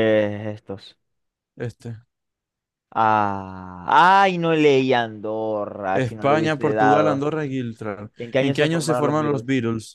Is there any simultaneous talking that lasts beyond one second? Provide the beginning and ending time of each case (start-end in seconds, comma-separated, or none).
5.9-7.3, 8.2-9.4